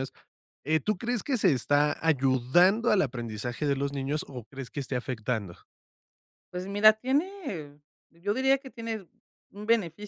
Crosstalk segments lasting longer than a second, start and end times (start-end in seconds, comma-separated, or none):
none